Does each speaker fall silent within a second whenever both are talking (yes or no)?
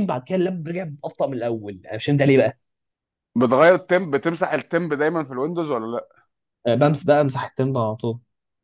yes